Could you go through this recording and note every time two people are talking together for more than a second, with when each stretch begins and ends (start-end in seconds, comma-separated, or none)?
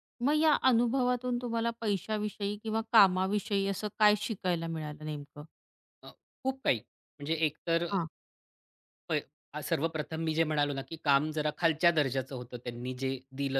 none